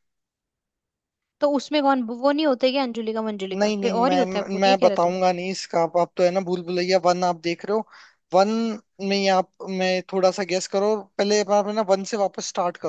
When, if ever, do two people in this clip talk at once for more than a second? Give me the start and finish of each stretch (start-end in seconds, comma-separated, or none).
3.5-5.2